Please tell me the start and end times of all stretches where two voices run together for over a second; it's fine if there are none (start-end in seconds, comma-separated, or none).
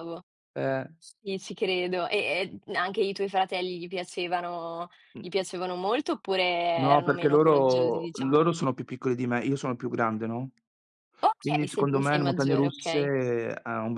6.8-8.5, 11.4-13.1